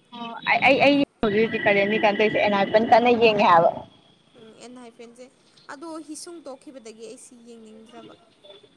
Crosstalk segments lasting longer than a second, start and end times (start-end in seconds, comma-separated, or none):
none